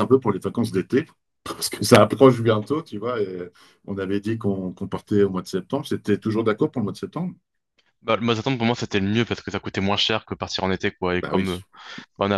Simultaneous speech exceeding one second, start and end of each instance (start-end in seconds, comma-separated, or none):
none